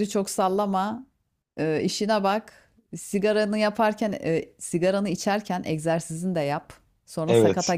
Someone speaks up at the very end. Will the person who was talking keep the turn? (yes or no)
yes